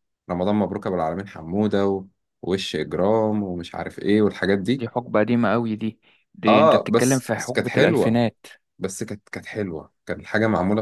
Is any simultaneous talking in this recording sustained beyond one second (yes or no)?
yes